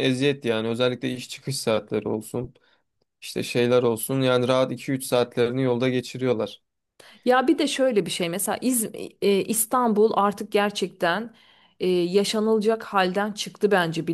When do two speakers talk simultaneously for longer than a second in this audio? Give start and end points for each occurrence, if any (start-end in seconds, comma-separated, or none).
none